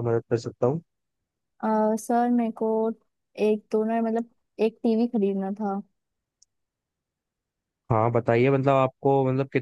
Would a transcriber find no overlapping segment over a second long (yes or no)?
yes